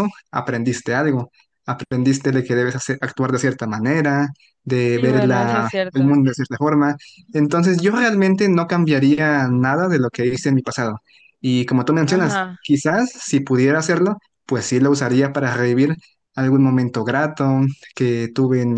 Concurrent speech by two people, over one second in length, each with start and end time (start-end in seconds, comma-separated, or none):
4.8-6.2